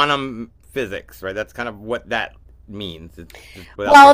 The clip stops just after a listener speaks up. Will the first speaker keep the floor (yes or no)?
no